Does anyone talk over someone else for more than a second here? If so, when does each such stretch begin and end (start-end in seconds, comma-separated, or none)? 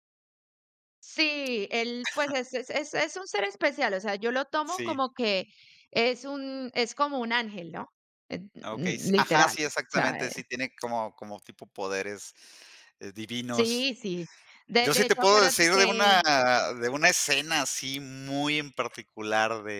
8.6-10.3, 14.8-16.2